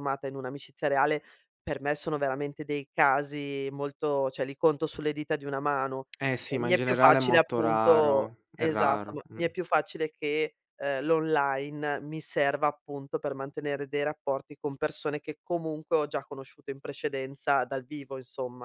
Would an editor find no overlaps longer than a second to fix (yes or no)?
no